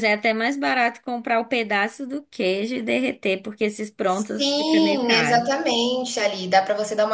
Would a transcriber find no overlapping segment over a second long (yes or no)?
no